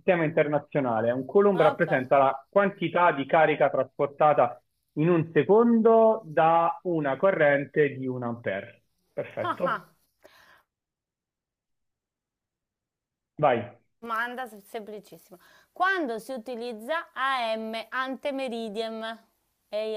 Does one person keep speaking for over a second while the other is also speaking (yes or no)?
no